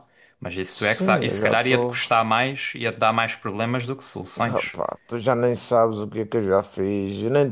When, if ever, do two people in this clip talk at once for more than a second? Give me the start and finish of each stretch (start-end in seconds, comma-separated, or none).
0.7-2.0